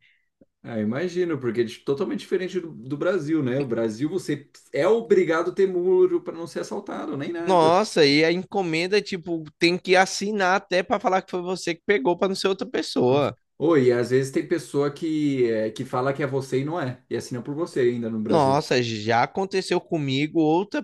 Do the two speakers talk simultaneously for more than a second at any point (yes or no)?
no